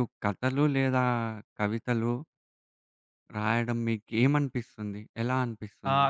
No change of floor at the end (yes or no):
no